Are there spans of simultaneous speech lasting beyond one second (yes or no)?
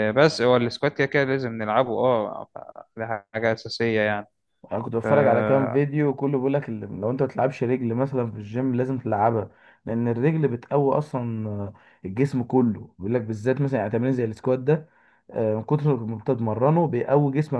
no